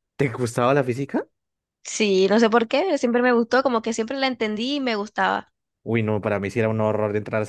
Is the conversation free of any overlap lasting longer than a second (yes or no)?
yes